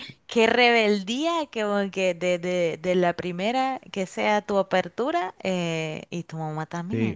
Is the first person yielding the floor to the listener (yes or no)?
yes